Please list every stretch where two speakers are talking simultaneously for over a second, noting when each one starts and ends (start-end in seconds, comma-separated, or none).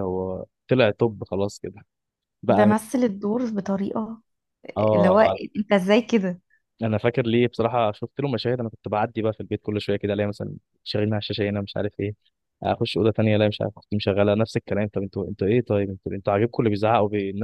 none